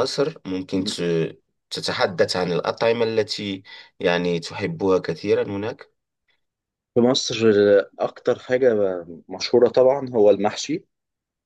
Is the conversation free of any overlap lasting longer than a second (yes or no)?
yes